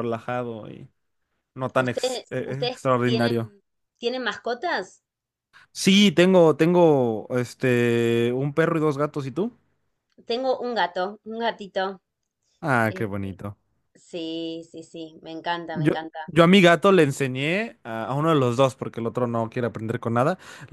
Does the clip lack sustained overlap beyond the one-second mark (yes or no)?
no